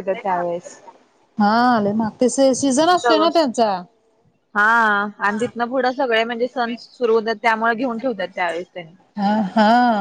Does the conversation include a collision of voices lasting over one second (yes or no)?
no